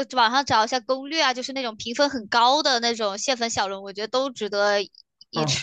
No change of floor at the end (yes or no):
no